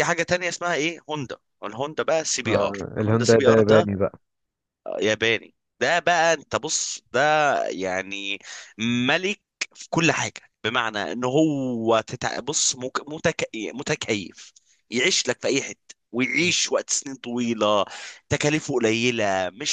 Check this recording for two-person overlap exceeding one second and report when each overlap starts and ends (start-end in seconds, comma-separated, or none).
2.5-3.9